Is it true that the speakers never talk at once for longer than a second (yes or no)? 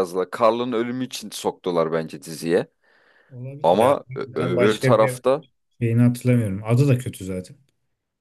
no